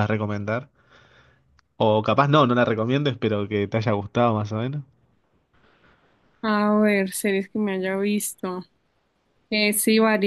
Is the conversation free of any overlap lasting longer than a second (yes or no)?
yes